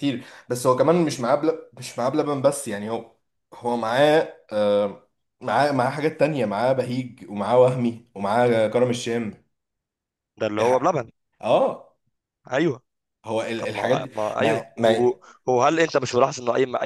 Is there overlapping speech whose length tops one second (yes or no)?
yes